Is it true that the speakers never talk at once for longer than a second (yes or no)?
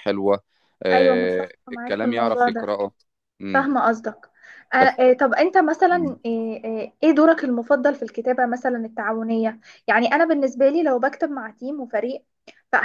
no